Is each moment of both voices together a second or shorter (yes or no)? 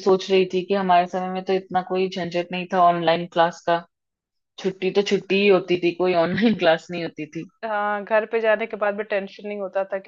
yes